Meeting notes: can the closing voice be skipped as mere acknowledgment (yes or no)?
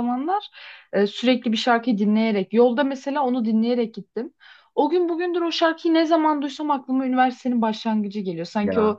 yes